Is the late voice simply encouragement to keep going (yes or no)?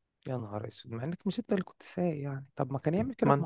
yes